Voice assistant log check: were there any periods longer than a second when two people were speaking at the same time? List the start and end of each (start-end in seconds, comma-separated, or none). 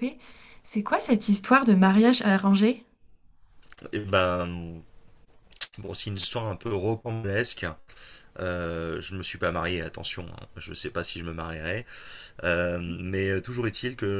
none